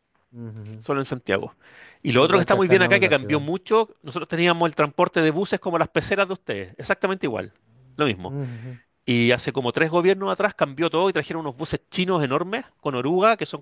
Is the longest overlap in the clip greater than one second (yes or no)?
yes